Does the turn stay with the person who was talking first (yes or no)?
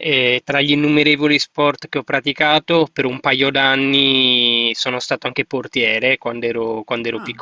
yes